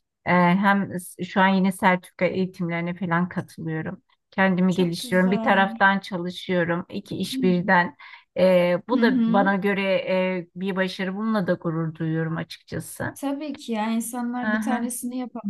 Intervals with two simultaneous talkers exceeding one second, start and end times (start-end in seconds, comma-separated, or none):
4.7-5.9